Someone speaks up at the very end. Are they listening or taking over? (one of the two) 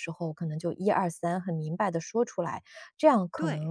listening